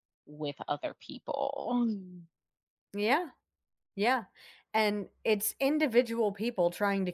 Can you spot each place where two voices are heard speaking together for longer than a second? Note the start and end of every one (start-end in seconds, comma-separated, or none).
none